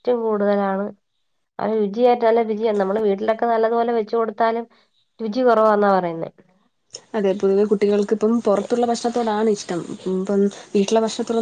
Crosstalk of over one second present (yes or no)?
no